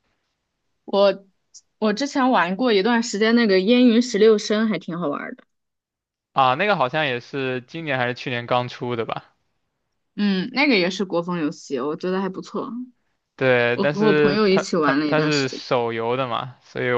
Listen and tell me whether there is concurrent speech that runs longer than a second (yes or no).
yes